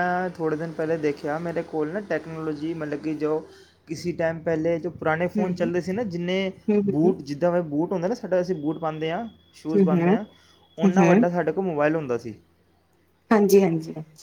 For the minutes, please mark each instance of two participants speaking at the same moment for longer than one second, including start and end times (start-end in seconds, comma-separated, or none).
none